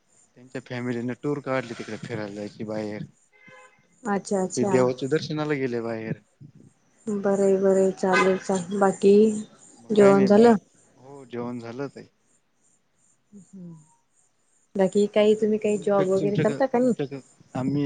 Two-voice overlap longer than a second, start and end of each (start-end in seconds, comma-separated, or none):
15.2-16.9